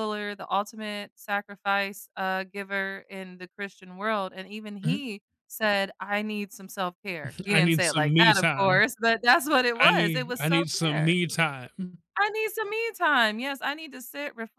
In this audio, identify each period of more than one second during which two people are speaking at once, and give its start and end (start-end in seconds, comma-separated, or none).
7.5-8.8, 9.8-11.2